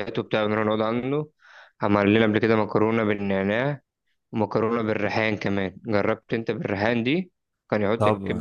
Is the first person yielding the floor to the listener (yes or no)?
yes